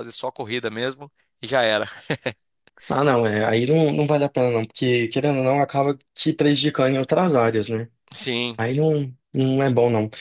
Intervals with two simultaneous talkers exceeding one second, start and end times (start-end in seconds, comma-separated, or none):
none